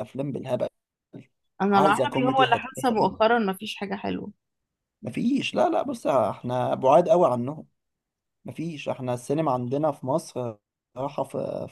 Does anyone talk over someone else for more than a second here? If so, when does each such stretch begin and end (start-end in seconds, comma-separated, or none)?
1.7-3.1